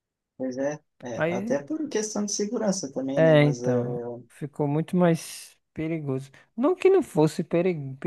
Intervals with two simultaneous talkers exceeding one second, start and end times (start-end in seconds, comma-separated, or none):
none